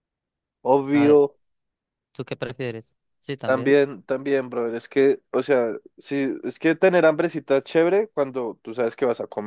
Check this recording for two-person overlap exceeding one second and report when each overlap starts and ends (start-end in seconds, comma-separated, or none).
none